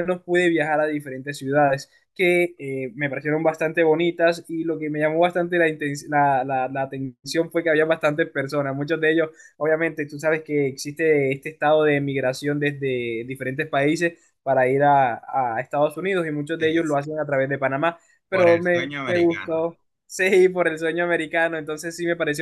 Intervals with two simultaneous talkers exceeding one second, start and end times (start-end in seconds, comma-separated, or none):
18.3-19.6